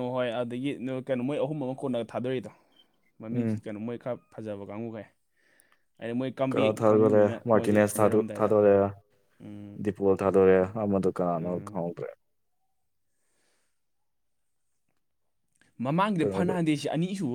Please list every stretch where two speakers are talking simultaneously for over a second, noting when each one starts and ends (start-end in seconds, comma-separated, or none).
6.5-8.3